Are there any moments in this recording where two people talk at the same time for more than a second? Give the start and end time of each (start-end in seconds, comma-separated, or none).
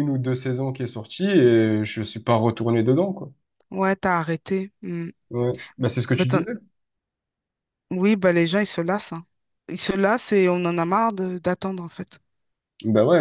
none